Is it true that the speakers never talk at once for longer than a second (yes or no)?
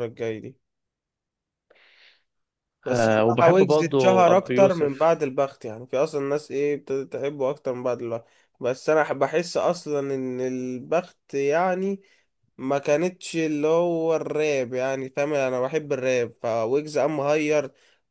no